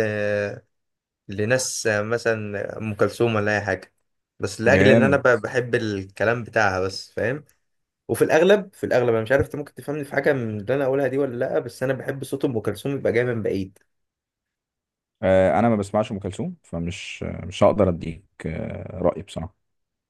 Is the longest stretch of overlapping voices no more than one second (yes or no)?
yes